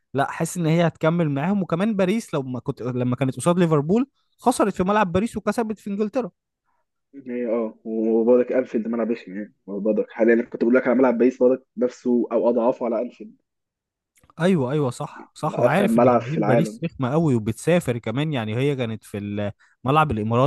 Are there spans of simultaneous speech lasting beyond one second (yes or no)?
yes